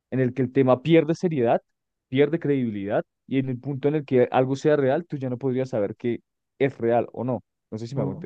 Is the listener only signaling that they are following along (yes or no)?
no